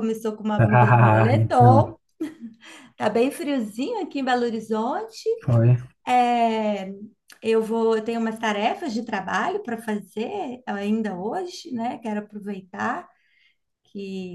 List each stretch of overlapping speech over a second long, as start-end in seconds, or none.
0.6-1.9